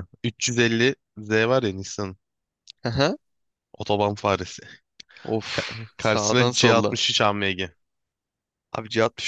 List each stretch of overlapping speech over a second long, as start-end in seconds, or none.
5.5-7.0